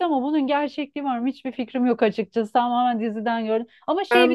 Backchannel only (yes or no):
yes